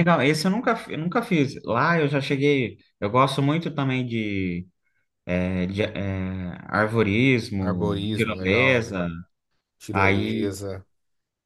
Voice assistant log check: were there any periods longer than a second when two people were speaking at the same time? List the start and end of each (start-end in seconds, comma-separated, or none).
7.6-9.0